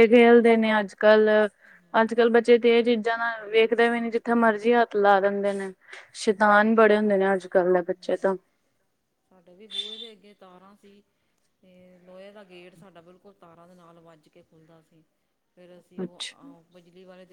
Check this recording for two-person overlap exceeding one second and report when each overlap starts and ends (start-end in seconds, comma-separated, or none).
none